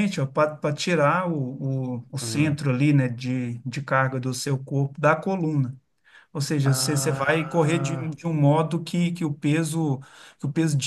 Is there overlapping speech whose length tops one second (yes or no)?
yes